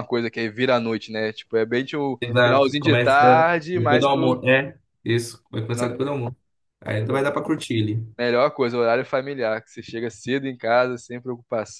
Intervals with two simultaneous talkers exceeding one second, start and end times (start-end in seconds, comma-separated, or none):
2.2-4.4